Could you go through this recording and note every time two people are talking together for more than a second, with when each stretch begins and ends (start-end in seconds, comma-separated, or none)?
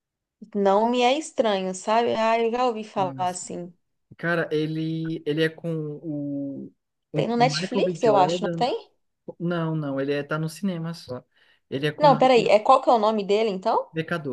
7.1-8.7